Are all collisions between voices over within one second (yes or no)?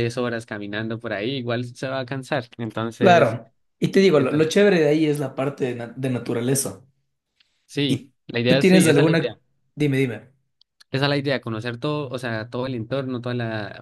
no